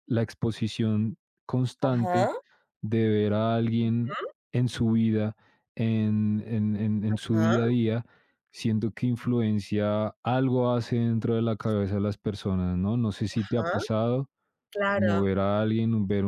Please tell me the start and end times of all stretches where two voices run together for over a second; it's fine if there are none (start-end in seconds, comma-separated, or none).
none